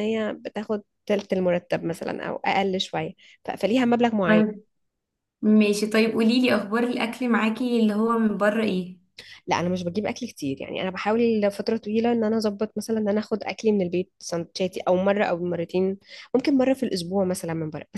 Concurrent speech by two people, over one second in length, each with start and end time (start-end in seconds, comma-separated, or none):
none